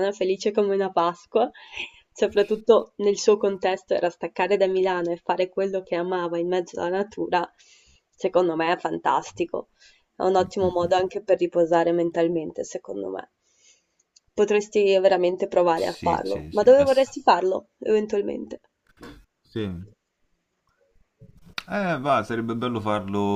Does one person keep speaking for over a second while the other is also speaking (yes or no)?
yes